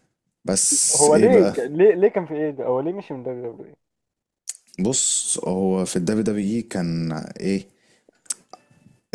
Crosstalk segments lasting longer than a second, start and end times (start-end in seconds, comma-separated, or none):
none